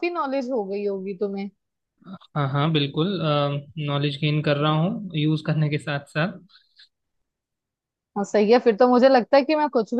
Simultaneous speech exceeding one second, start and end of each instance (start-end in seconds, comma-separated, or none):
none